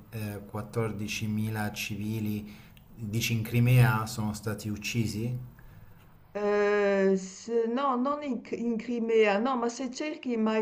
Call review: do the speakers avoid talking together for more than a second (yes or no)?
yes